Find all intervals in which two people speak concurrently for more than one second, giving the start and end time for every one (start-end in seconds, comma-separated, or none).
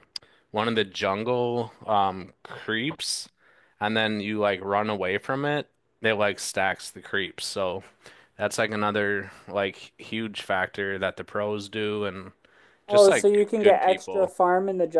12.9-14.3